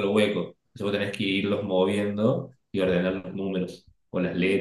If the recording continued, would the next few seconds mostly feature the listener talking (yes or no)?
yes